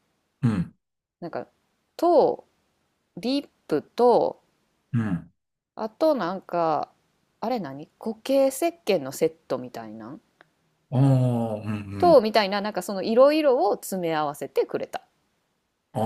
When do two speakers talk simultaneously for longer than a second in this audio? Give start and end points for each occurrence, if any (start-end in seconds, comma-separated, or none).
none